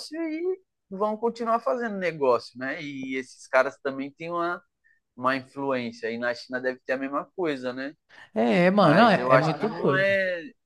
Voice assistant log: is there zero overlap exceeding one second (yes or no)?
no